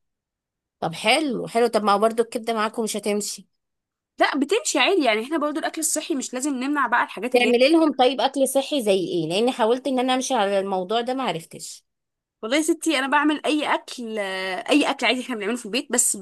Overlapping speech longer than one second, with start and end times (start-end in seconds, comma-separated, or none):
none